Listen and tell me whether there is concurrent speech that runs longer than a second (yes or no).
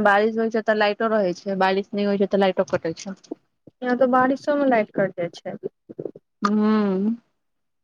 no